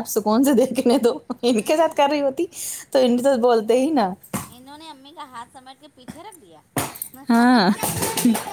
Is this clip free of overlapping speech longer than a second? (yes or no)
yes